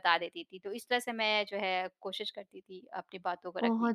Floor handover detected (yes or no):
yes